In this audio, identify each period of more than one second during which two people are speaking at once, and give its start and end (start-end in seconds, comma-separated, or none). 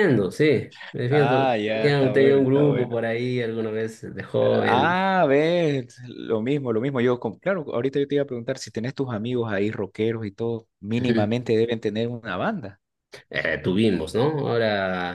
1.1-3.0